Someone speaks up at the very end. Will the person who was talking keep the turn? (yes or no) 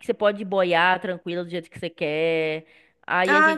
no